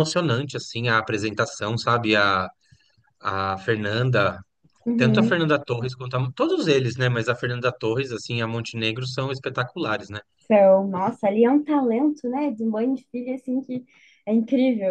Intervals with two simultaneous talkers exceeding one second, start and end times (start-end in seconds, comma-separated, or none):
none